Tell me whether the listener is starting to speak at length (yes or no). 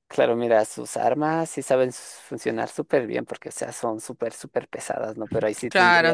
yes